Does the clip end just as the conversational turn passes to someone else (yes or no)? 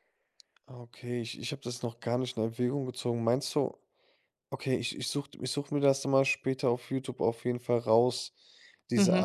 yes